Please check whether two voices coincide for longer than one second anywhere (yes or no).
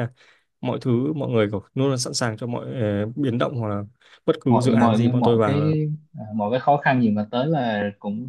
yes